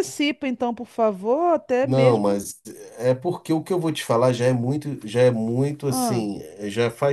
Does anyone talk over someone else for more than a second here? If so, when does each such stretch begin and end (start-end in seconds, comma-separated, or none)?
none